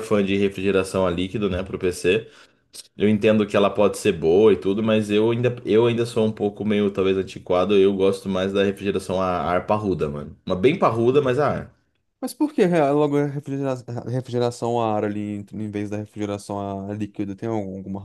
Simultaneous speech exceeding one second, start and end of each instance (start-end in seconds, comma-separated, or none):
none